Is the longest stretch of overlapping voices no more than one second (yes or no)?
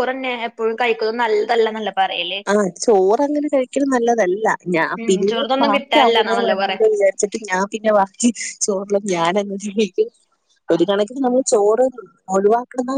no